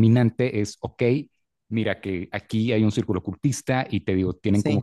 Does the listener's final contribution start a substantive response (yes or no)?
no